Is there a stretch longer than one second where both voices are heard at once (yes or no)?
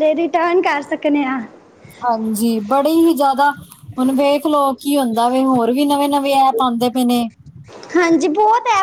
no